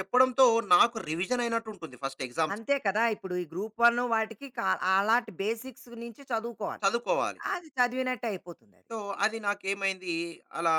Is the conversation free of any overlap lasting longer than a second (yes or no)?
yes